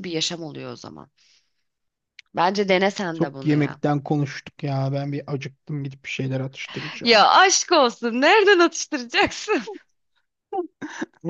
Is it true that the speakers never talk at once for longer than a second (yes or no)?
yes